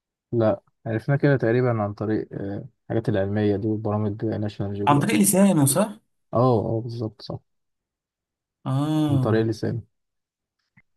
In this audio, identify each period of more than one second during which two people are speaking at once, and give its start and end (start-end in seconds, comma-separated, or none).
none